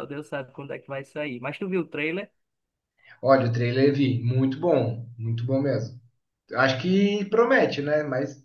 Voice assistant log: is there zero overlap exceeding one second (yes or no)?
yes